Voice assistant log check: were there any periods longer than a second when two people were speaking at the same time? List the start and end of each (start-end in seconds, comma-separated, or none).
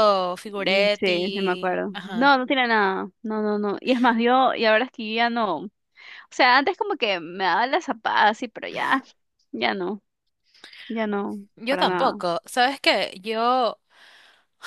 0.5-2.3